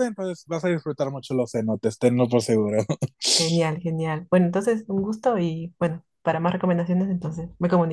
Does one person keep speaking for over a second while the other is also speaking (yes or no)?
no